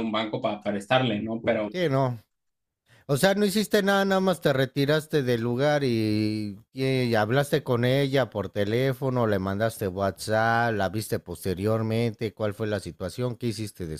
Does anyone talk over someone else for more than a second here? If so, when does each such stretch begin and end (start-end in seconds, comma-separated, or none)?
none